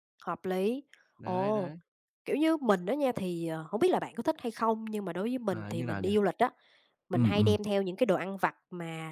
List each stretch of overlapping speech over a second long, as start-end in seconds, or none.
none